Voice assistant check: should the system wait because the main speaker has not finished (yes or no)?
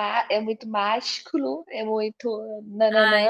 no